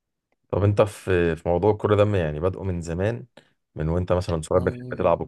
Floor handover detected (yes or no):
no